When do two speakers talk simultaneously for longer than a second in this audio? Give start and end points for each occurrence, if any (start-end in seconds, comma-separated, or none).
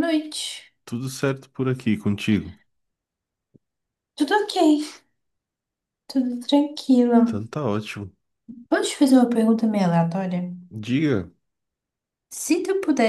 none